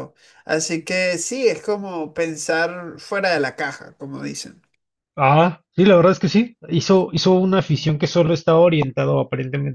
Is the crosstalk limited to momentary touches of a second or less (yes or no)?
yes